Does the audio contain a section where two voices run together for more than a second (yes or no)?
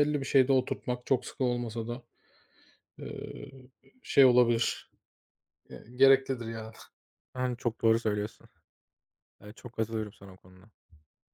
no